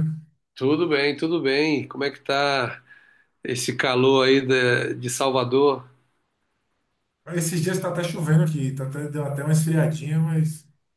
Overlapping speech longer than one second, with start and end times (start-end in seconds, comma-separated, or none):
none